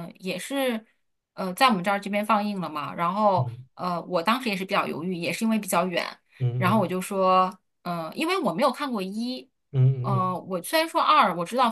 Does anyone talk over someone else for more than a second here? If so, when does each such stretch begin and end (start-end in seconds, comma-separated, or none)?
none